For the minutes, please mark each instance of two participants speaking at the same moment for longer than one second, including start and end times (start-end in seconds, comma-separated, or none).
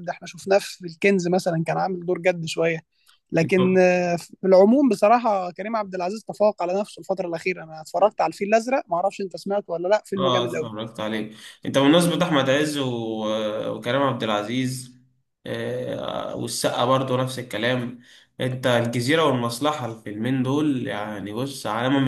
none